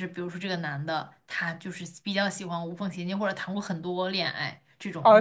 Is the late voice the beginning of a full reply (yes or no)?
yes